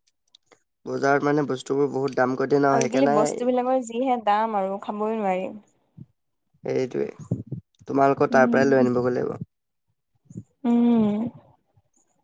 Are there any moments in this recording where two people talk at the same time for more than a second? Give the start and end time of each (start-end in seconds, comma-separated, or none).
none